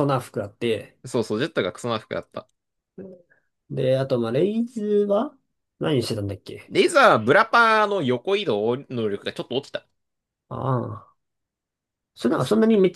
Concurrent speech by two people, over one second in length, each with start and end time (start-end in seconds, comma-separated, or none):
none